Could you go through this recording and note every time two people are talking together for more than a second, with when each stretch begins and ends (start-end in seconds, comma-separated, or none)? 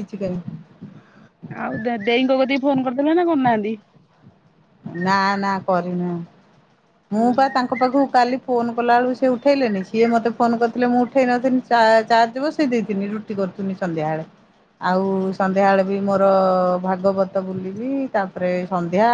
none